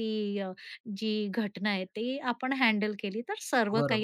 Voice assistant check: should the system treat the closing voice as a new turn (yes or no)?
yes